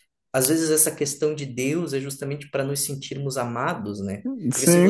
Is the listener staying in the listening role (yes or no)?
no